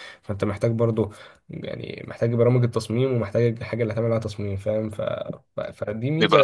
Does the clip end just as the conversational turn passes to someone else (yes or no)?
yes